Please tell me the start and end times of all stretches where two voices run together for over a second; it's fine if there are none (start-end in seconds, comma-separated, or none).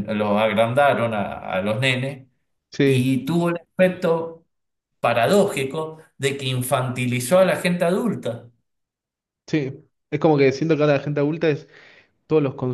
none